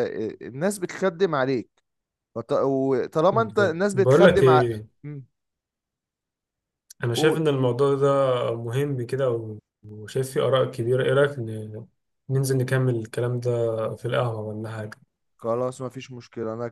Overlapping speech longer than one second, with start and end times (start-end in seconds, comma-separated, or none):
3.3-4.6